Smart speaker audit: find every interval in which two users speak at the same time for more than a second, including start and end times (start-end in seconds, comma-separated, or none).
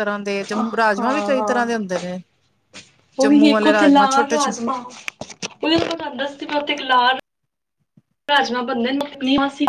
3.2-4.5